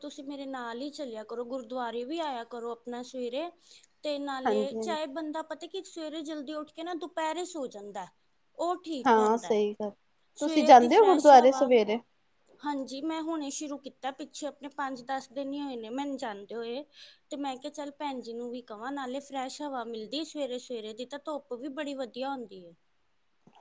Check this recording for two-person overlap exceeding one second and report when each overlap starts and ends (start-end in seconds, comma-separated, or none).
10.4-11.7